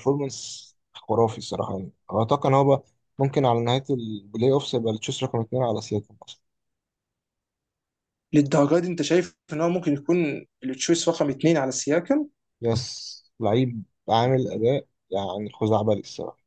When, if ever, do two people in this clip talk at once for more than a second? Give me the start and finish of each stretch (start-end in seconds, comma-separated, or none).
none